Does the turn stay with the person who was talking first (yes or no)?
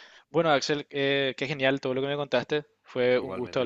yes